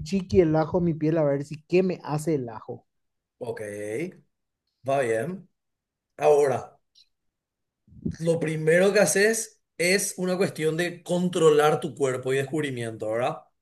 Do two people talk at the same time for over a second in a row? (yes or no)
no